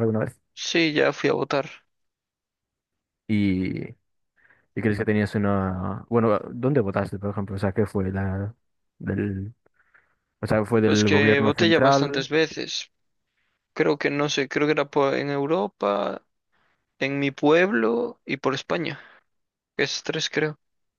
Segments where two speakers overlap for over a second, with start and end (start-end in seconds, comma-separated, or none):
10.8-12.3